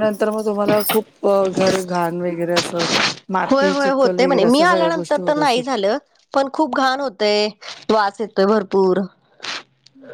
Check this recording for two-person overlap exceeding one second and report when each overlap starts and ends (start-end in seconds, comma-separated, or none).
3.5-5.6